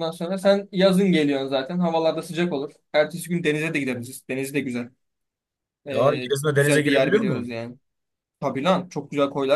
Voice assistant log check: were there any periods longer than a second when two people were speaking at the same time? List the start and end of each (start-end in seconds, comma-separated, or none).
5.9-7.5